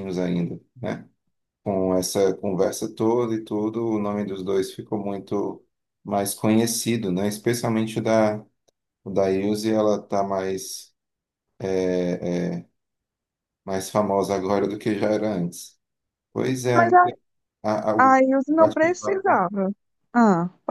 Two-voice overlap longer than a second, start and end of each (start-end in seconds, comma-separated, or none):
18.0-19.4